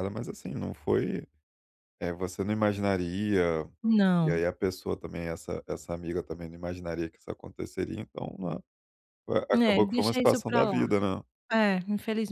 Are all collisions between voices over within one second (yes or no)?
no